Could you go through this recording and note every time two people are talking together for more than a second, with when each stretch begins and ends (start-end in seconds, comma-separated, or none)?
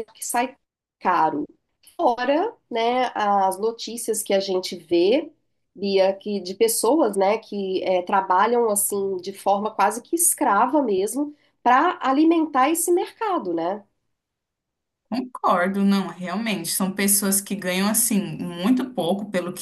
none